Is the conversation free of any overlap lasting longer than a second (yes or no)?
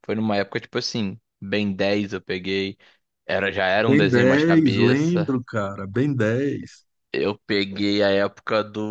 no